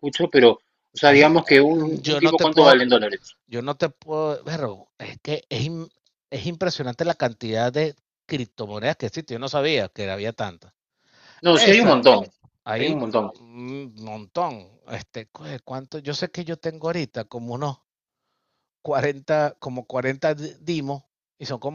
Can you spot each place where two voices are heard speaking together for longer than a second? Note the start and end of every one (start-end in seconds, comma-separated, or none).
1.0-2.9